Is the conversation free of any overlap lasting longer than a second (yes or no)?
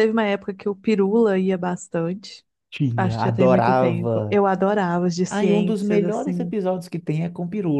no